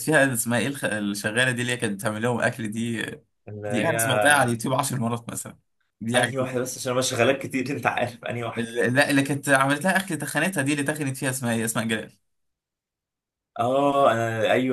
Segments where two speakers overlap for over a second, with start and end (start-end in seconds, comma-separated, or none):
none